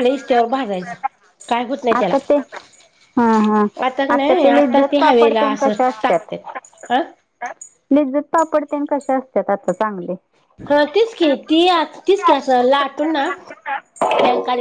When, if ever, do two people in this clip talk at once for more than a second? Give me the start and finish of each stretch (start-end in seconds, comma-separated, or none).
4.1-6.9